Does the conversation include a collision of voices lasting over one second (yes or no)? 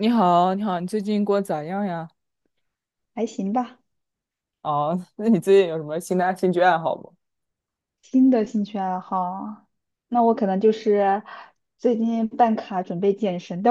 no